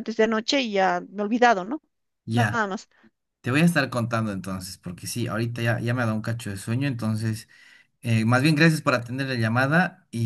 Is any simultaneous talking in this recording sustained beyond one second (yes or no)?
no